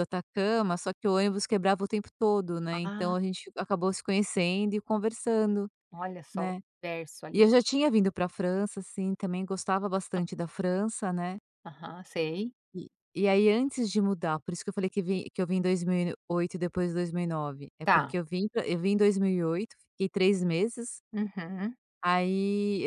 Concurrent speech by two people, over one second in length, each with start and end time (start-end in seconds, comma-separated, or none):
none